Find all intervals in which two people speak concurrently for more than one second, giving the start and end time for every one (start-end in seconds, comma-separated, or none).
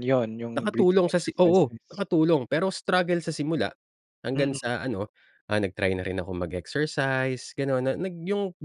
0.6-2.0